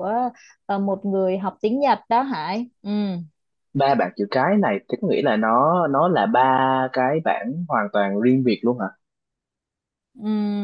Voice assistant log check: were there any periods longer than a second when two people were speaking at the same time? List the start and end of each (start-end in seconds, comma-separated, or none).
none